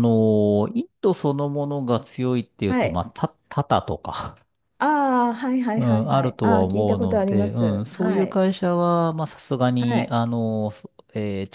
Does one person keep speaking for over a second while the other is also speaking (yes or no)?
yes